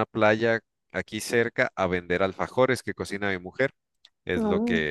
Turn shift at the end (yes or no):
no